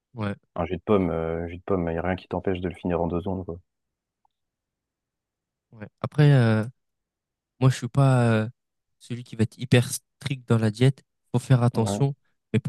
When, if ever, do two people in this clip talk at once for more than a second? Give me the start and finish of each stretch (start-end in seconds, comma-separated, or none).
none